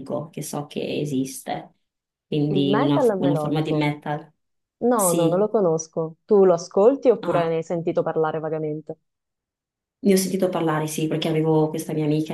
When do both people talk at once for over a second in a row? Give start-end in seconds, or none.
2.5-3.9